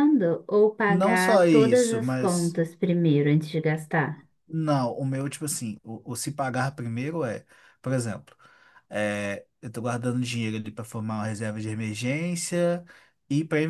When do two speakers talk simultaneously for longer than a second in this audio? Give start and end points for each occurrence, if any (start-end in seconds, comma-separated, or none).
0.9-2.6